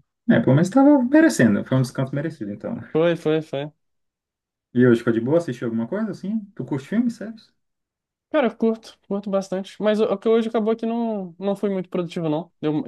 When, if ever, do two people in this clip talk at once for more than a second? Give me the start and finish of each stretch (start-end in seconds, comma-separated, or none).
none